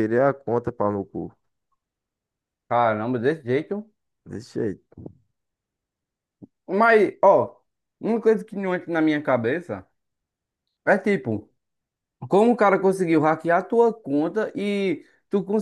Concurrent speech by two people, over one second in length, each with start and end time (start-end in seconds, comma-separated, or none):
none